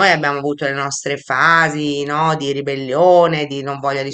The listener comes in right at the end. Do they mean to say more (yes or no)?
no